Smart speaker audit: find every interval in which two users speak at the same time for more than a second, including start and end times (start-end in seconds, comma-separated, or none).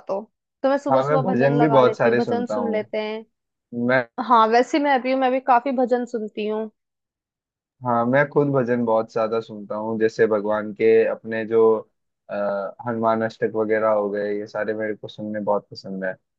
0.9-2.8